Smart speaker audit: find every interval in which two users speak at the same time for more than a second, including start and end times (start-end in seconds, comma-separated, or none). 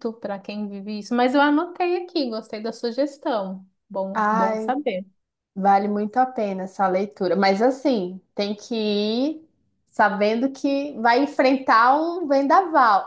none